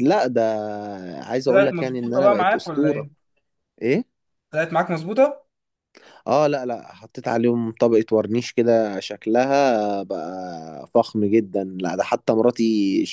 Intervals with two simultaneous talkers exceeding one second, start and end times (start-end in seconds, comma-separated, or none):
1.5-3.1